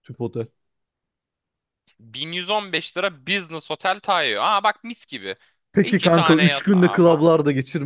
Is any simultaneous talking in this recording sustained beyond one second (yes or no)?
yes